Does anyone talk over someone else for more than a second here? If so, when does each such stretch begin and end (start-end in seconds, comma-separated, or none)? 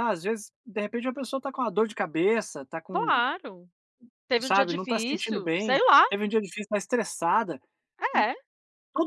4.4-6.0